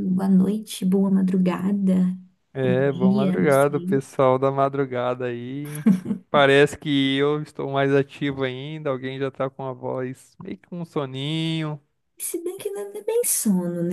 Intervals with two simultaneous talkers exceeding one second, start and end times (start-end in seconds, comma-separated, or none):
2.6-4.0